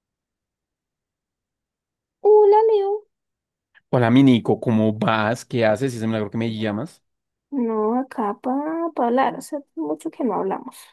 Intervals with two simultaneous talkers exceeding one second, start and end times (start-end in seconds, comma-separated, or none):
none